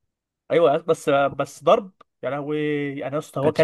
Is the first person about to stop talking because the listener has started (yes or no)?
no